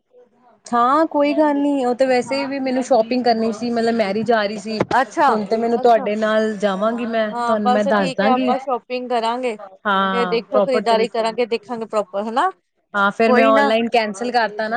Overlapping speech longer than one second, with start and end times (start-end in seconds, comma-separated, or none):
10.1-11.4